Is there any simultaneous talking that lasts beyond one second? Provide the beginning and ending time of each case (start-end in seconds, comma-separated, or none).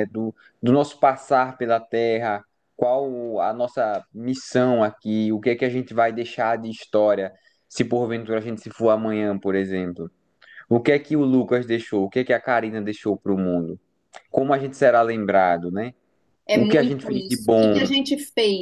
16.5-17.9